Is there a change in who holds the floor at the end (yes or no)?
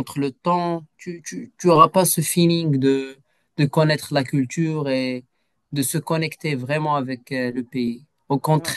no